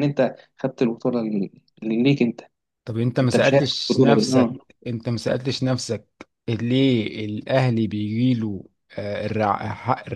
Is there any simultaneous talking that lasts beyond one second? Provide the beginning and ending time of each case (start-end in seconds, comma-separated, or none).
3.2-4.7